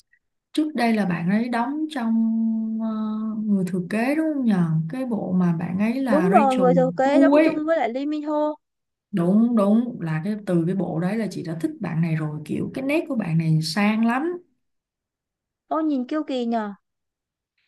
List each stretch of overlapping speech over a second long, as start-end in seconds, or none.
6.1-7.5